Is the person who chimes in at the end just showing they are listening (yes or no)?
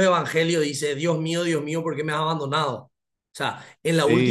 yes